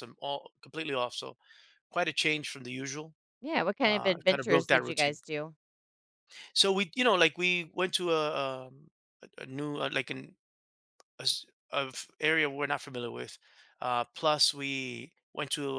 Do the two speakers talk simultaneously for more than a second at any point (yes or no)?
yes